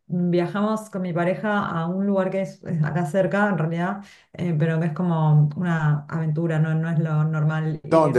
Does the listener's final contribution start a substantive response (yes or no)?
no